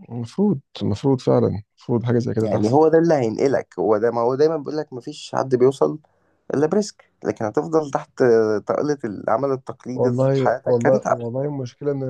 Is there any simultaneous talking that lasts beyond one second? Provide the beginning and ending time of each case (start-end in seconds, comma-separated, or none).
9.9-11.2